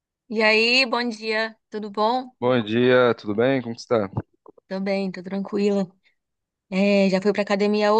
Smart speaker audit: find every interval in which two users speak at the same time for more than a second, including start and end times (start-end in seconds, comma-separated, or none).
none